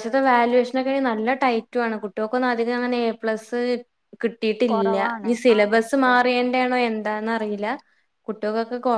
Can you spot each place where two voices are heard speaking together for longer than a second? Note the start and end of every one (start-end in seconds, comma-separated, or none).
4.7-6.5